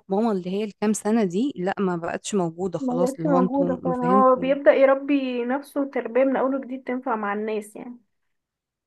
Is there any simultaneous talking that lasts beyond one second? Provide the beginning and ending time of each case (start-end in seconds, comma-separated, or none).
2.8-4.5